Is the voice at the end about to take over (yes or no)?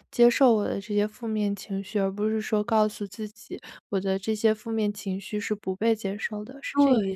yes